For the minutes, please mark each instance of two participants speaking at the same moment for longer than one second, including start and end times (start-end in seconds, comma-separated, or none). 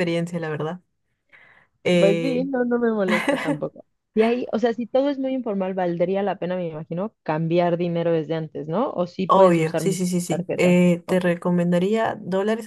9.3-11.2